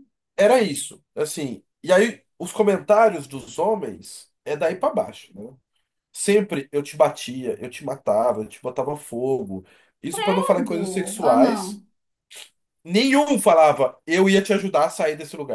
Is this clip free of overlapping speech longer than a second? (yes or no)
no